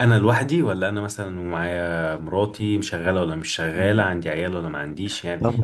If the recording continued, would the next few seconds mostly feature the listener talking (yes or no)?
yes